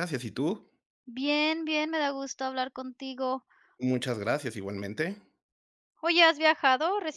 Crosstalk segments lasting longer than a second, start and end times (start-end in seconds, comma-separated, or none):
none